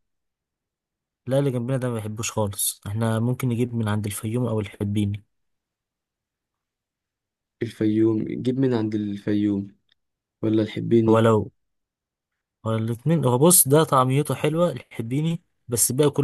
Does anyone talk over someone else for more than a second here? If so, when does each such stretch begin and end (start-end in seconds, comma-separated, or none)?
none